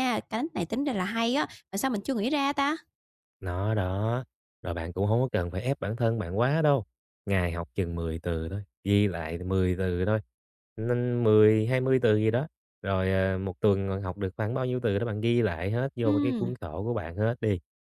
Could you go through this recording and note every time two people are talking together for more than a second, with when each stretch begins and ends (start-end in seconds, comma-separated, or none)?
none